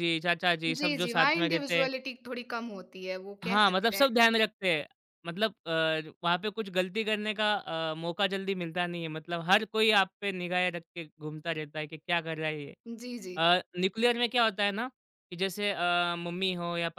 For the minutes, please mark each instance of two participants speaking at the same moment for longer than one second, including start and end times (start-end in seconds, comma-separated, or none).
0.7-1.9